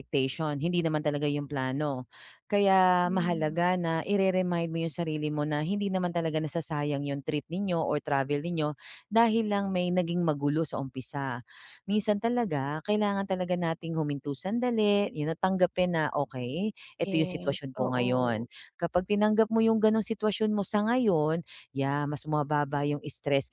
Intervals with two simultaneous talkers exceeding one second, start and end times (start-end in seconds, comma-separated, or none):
17.0-18.4